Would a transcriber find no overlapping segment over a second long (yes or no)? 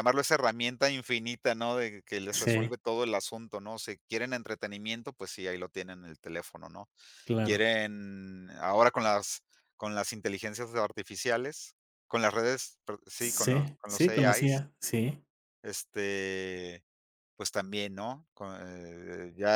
no